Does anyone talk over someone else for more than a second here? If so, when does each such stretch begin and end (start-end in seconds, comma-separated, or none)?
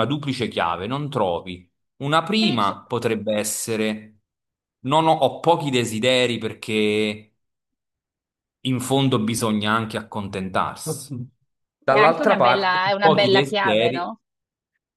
11.9-14.1